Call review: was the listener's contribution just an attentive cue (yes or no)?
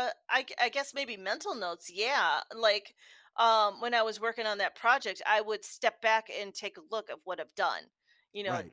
yes